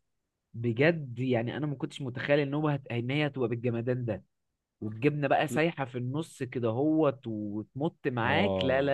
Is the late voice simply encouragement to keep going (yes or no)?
no